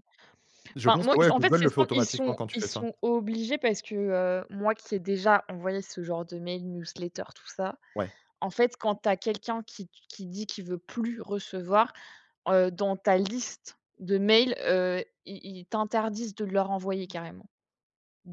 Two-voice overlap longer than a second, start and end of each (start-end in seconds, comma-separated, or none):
0.9-2.8